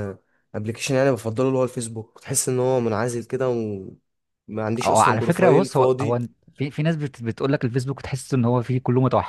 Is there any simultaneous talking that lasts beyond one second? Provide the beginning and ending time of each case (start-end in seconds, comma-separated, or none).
4.8-6.2